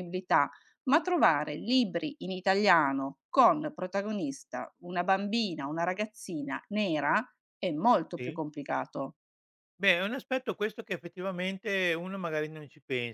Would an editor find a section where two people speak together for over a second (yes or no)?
no